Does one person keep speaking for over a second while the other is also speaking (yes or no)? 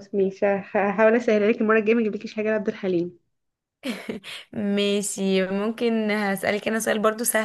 no